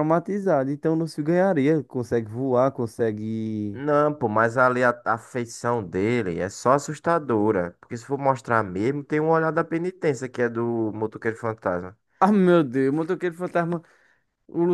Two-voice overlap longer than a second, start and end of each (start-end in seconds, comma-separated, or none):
none